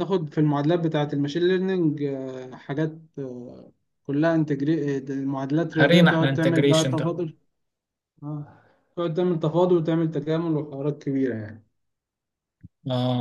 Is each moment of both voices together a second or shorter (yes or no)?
no